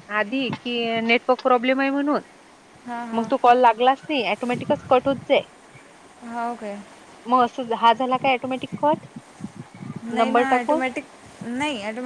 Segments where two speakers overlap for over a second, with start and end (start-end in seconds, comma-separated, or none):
none